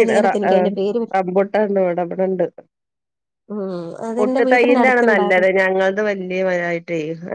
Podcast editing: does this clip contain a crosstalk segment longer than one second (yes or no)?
yes